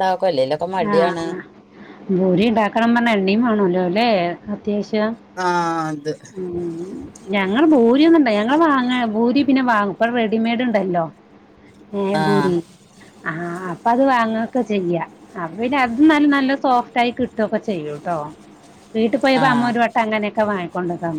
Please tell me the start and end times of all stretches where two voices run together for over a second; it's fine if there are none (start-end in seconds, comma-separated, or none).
none